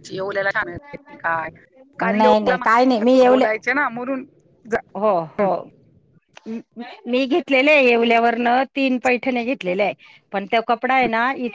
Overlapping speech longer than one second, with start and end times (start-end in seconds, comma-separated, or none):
2.2-3.4